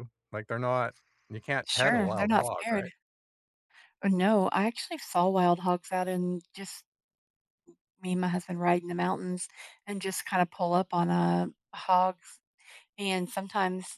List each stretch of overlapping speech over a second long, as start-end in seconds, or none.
1.7-2.9